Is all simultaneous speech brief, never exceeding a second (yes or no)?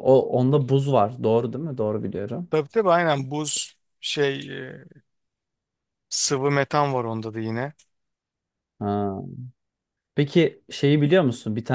yes